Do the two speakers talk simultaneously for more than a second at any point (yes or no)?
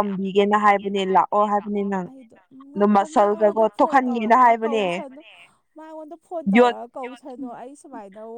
yes